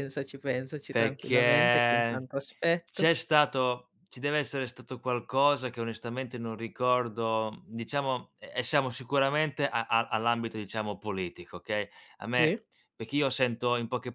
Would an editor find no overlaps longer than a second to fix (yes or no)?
no